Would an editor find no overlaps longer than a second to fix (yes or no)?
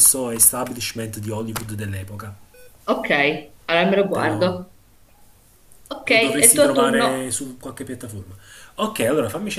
no